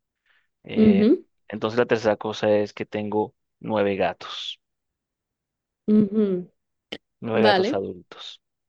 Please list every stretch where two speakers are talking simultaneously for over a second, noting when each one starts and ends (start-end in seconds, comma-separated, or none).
none